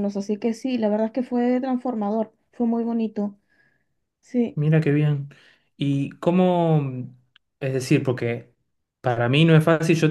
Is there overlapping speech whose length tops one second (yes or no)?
no